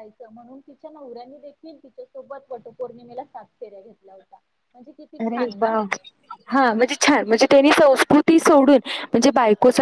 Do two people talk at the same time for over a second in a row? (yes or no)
no